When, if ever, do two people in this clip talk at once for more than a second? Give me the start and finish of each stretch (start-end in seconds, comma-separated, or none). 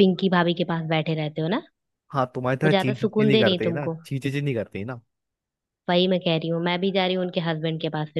2.6-4.0